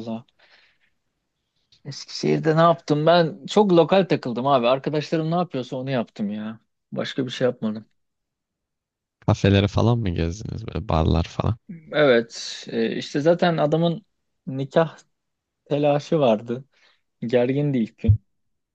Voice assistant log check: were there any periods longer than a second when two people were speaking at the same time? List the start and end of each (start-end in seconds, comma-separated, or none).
none